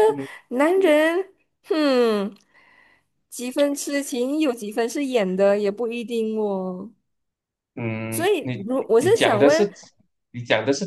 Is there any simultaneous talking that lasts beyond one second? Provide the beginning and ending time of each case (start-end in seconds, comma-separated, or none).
8.1-9.7